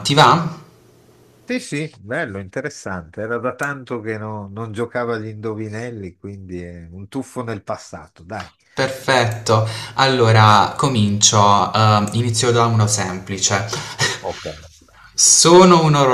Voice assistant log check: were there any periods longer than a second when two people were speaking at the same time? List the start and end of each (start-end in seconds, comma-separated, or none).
none